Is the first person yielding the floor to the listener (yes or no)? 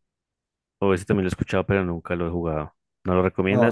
yes